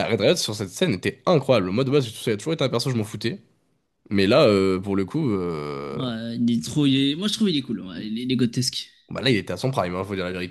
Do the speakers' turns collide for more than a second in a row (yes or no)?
no